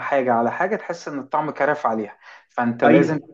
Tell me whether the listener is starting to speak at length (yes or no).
no